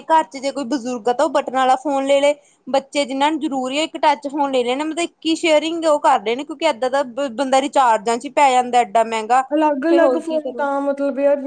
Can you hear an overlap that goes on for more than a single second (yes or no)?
no